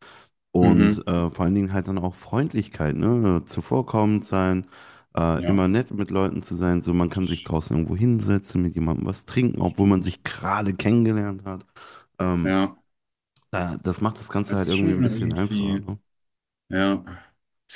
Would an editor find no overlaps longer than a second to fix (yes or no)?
no